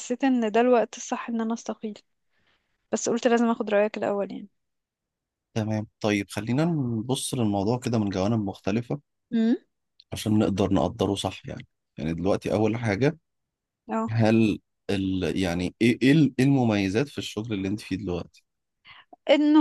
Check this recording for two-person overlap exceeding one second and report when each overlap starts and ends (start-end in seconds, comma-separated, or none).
none